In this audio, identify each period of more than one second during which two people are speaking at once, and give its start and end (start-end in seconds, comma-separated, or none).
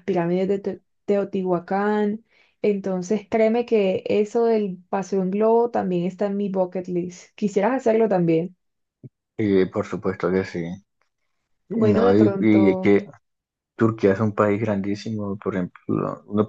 11.7-12.9